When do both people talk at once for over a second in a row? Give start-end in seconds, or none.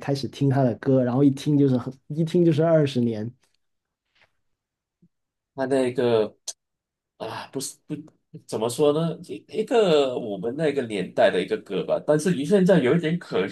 none